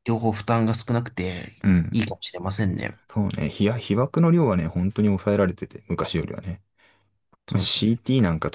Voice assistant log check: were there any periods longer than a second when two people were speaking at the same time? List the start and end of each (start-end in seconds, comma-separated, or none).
none